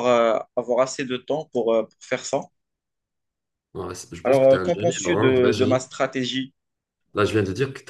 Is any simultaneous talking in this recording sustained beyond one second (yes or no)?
yes